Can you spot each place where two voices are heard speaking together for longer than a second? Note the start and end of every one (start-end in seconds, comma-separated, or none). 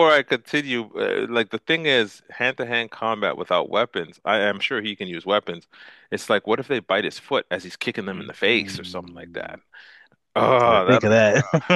8.1-9.6